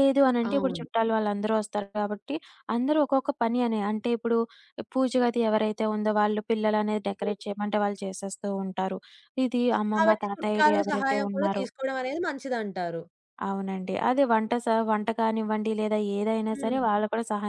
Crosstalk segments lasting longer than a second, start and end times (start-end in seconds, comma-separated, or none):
9.9-11.7